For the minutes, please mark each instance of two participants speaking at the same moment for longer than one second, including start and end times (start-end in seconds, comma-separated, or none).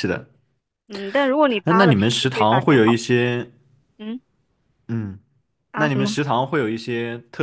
1.6-3.1